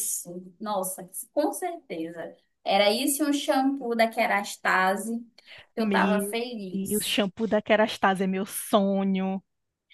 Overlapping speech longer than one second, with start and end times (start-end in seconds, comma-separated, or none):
5.8-7.2